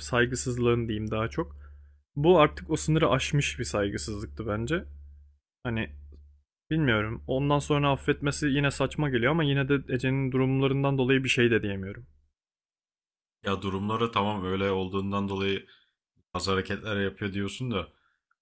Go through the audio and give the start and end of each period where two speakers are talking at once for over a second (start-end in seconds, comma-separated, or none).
none